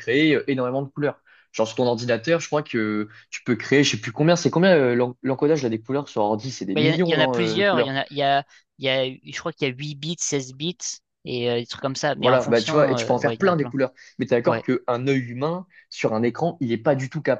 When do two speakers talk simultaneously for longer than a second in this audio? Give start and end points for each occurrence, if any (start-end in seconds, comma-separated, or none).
6.7-8.0, 12.2-13.8